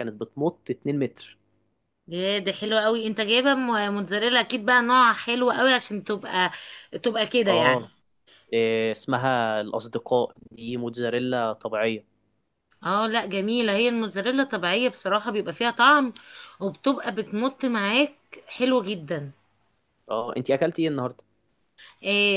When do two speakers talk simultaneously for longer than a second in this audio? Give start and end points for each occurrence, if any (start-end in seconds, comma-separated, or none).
none